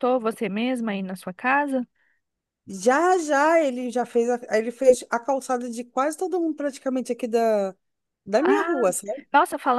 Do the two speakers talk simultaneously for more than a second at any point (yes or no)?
no